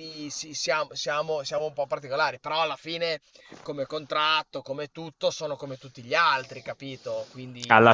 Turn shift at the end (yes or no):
yes